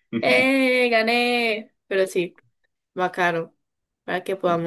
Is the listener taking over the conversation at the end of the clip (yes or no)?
no